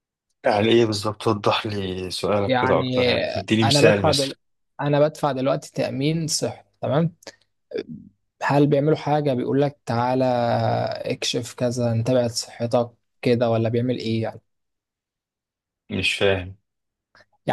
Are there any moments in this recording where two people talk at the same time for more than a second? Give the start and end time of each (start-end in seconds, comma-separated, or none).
2.5-4.3